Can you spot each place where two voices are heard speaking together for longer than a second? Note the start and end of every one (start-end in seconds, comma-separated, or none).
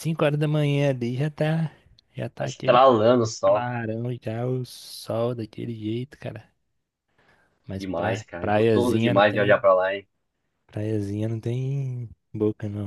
7.8-9.6